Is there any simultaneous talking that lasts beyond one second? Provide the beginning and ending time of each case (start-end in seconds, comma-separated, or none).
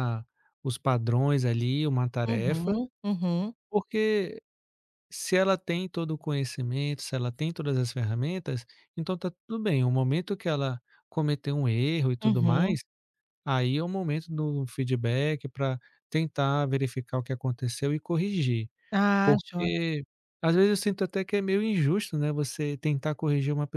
none